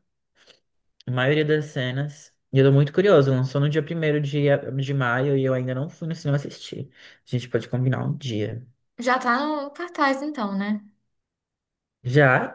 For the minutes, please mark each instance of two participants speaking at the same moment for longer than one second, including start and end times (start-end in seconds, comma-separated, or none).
none